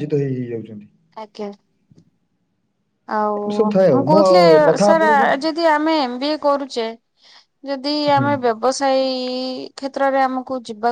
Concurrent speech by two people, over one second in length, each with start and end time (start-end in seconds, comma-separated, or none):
none